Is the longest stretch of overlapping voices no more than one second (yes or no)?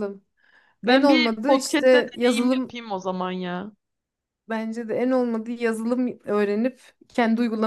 no